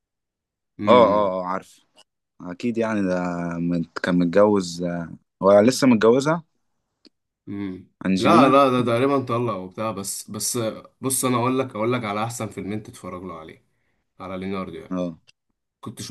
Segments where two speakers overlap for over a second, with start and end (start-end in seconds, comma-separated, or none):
none